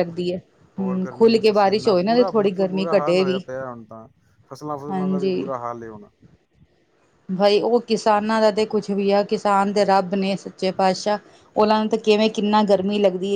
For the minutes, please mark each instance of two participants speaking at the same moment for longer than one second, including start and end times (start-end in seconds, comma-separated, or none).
0.8-3.4